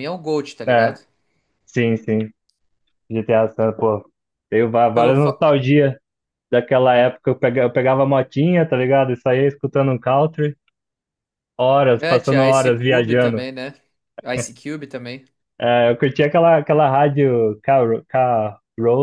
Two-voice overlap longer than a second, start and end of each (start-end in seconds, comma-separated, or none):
11.9-13.4